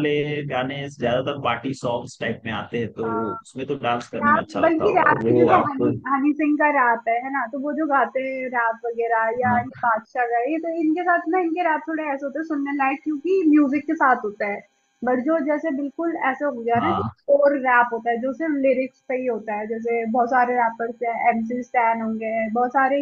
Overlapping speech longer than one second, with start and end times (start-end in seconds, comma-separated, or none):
4.1-5.9